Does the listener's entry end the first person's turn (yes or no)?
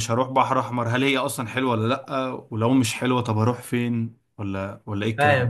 yes